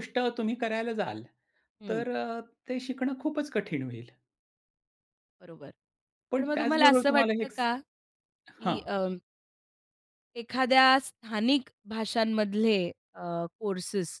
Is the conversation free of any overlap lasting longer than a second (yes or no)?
no